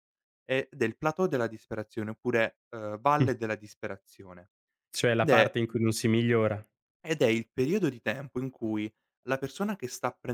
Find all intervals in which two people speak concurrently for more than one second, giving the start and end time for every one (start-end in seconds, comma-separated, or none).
none